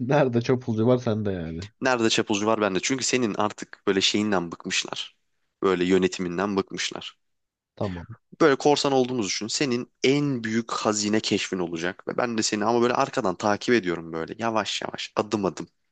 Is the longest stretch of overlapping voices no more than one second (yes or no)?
yes